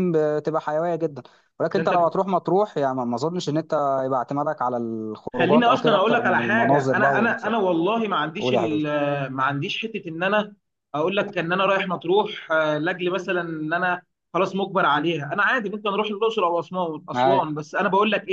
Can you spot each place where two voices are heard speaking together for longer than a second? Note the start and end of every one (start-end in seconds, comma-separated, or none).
5.3-7.5